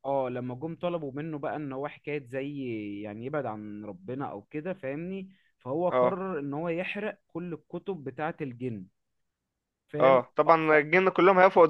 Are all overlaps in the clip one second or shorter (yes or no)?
yes